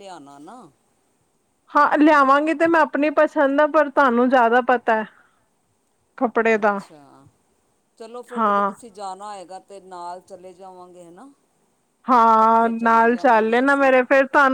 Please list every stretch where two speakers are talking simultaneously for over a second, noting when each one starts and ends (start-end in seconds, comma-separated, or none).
12.3-13.9